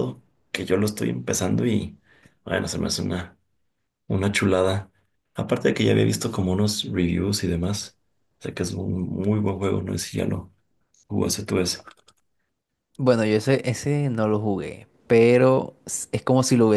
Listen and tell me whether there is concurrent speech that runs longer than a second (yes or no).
no